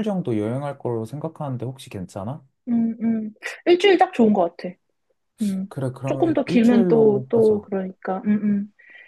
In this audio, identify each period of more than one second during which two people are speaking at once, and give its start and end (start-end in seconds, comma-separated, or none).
5.7-7.7